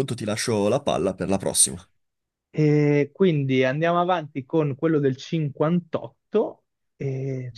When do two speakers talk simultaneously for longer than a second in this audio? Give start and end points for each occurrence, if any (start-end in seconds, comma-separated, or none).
none